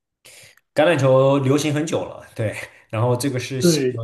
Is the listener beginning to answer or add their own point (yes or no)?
no